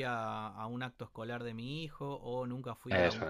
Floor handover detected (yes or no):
no